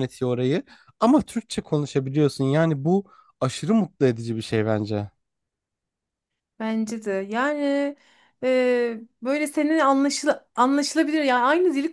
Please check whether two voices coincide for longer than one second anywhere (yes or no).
no